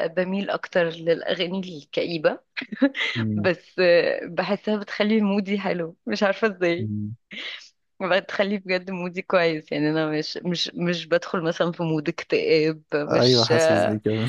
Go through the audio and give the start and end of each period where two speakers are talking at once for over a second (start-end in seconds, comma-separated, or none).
none